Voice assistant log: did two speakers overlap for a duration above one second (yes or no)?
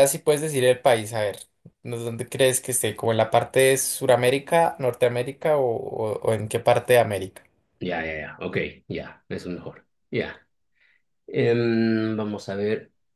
no